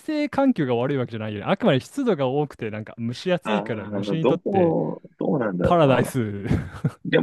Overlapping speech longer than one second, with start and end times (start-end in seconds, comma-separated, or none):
3.4-4.8